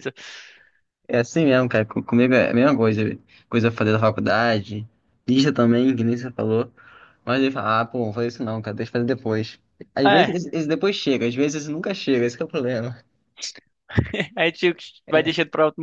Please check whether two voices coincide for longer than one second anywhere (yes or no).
no